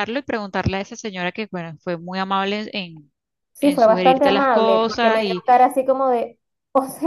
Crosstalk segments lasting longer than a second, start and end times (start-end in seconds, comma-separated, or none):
3.6-5.2